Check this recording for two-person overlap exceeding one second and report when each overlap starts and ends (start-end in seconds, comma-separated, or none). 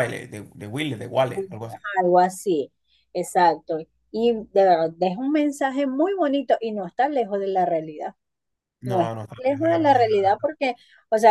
8.8-10.3